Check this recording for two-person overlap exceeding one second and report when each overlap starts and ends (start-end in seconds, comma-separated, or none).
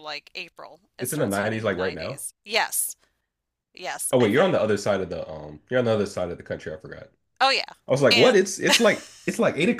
1.0-2.2